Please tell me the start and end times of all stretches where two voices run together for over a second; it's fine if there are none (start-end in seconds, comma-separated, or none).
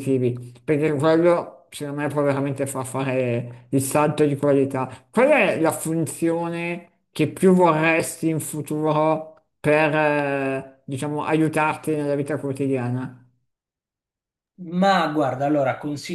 none